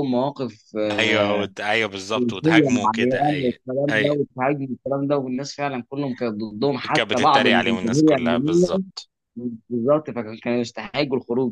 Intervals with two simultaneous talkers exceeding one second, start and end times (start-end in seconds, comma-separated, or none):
2.1-4.2, 6.9-8.8